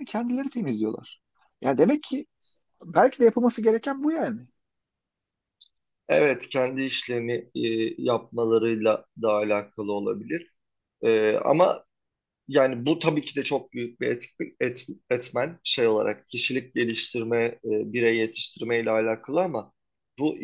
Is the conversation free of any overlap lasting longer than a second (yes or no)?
yes